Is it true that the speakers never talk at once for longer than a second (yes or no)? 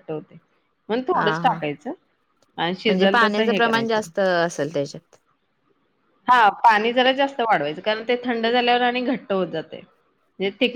no